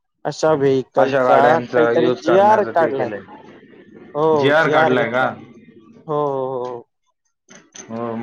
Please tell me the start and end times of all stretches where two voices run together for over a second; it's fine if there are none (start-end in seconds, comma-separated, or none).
1.0-3.1